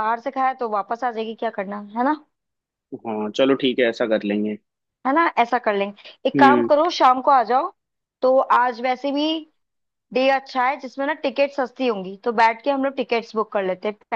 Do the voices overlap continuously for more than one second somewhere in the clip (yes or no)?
no